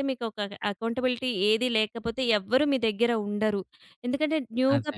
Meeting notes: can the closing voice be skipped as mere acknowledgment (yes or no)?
yes